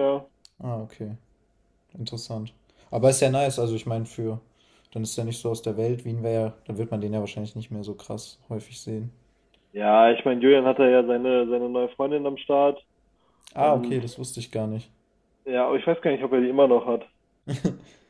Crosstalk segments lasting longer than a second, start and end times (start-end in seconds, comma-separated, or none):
none